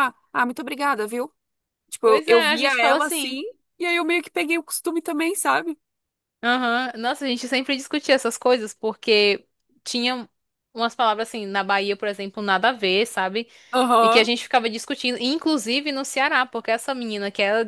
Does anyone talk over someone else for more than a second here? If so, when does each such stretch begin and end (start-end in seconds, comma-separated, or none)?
2.0-3.4